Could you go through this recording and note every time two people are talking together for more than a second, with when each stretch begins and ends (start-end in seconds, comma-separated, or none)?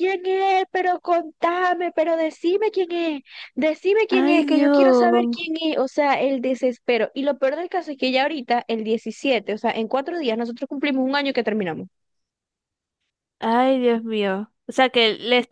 4.1-5.4